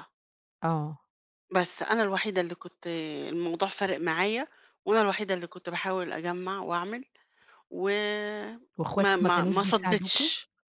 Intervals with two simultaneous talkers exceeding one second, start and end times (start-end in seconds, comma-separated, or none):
8.9-10.2